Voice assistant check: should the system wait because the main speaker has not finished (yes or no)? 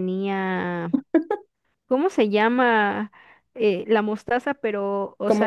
yes